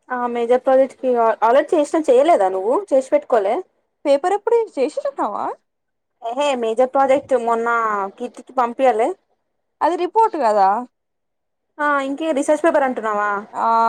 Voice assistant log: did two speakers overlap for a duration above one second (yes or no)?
no